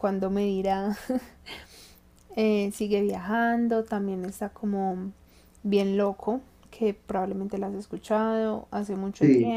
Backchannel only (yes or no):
yes